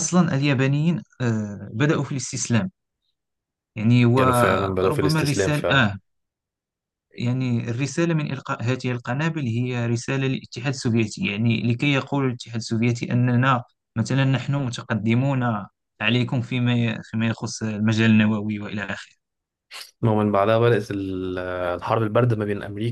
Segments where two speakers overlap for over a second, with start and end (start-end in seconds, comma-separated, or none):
4.2-5.9